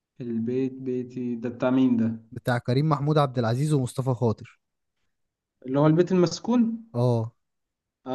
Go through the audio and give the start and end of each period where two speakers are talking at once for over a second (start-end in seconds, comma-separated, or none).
none